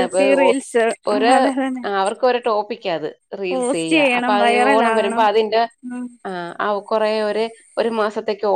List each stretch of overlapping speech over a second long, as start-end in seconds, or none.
3.5-5.2